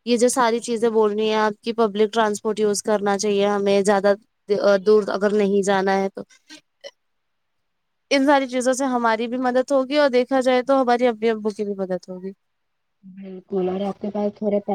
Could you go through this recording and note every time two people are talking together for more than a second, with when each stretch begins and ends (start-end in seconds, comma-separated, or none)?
none